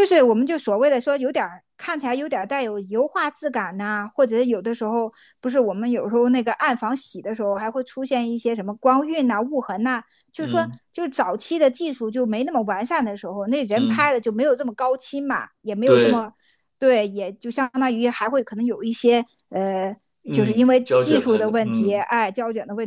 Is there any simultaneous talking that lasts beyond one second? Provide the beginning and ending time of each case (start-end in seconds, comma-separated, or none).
20.2-22.1